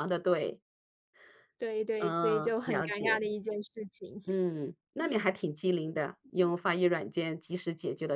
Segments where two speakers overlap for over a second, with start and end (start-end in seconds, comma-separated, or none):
2.0-3.2